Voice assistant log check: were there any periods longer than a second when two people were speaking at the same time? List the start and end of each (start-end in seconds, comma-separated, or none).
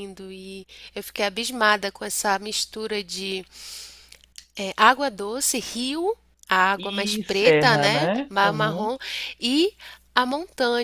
6.8-8.9